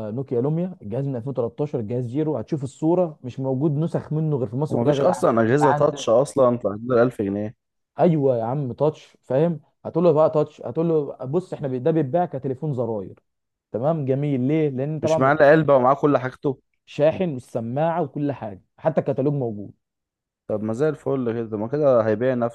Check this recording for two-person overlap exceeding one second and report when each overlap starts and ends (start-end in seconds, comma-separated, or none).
4.7-6.1